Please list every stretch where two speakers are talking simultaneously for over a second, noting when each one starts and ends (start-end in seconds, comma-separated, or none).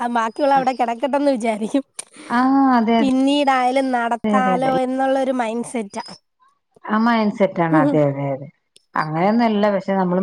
none